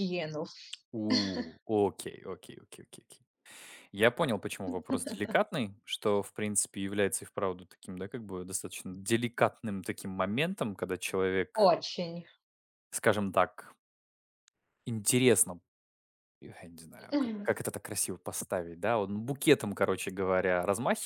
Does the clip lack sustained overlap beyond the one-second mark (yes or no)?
yes